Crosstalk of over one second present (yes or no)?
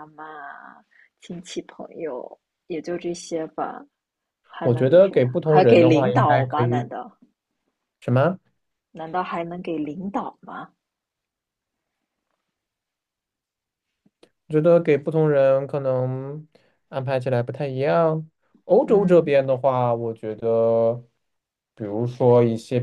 yes